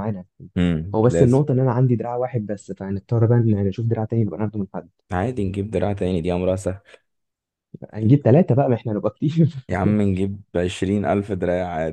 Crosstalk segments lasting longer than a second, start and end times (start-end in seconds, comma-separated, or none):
none